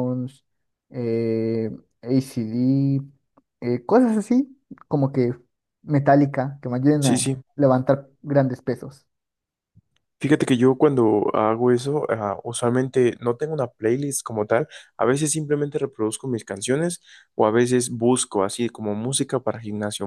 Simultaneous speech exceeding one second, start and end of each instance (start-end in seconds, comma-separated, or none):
none